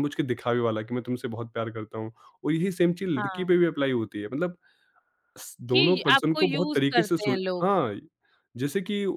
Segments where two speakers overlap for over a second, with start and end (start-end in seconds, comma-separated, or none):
5.7-7.7